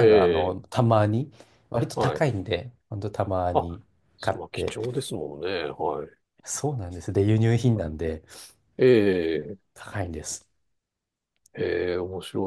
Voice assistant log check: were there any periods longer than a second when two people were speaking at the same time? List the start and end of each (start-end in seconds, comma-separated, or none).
none